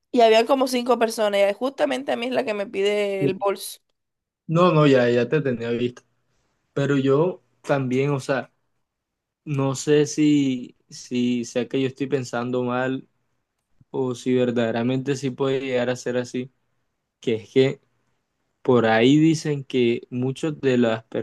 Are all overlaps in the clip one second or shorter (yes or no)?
yes